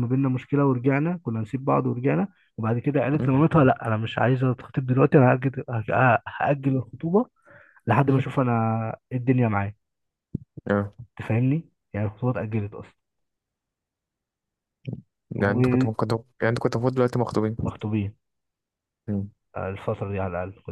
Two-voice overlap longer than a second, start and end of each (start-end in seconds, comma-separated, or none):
none